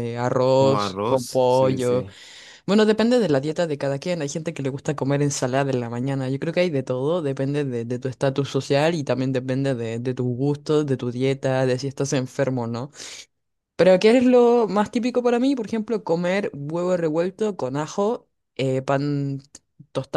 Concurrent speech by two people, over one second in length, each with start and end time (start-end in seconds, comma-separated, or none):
0.5-2.1